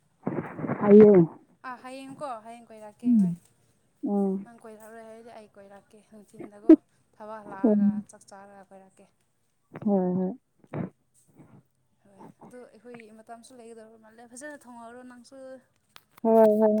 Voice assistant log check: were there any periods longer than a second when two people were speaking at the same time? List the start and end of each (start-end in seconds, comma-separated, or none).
none